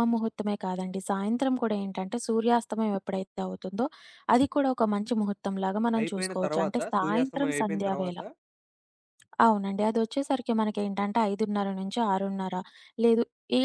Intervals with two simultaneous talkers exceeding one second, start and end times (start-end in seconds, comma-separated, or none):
6.0-8.2